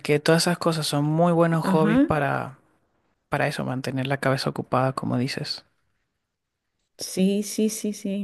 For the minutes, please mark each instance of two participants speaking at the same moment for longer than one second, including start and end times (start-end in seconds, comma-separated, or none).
none